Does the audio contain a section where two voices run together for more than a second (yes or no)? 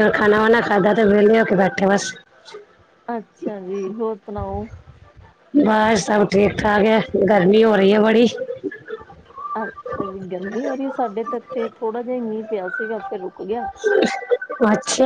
no